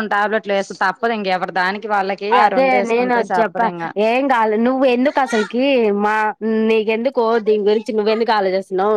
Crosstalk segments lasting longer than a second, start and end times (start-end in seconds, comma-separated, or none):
none